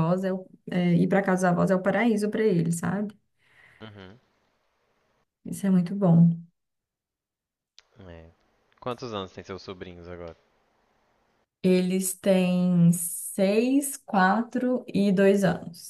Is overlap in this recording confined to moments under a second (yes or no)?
yes